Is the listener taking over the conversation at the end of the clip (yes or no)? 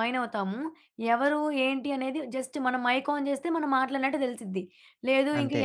no